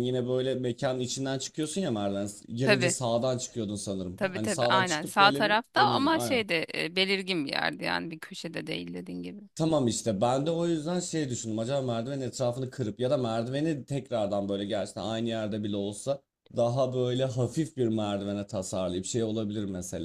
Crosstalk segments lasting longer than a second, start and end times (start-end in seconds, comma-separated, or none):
4.2-6.5